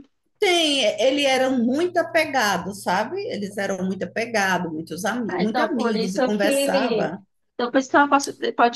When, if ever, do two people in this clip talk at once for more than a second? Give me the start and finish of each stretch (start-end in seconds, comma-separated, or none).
5.3-7.1